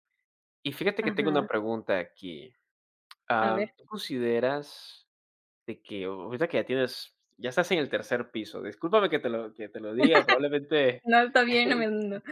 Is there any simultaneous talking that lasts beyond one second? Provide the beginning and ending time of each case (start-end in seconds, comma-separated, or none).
none